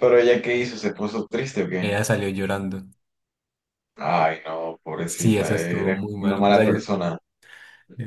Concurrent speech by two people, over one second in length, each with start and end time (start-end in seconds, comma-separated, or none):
5.0-6.8